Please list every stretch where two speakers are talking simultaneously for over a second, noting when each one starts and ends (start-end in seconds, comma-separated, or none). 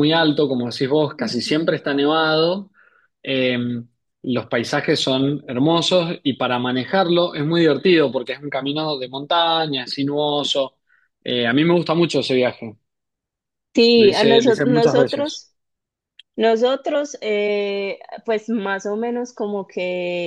14.0-15.4